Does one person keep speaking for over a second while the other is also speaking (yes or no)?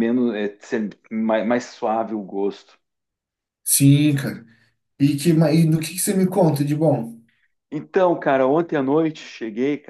no